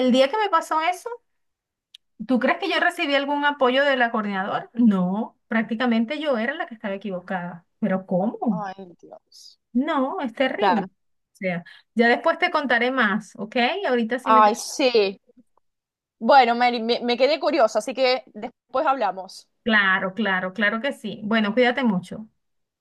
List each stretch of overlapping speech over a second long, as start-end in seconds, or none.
none